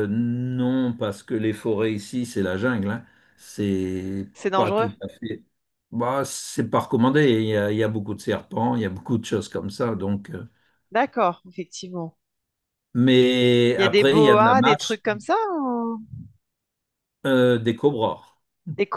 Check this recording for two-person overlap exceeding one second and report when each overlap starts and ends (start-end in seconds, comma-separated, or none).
13.8-15.0